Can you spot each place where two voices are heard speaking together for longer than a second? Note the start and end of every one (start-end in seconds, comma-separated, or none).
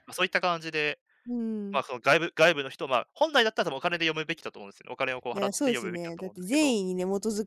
5.3-6.8